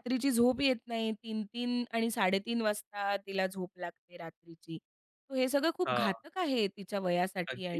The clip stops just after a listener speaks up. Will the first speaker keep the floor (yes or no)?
no